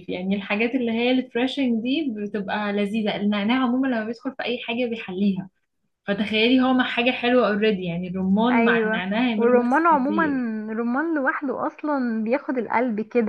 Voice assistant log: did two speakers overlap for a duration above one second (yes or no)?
yes